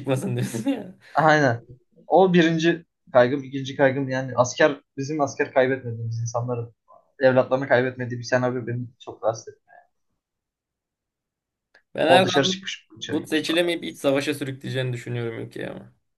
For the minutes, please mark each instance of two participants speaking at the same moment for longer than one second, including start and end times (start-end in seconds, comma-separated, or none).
12.1-13.6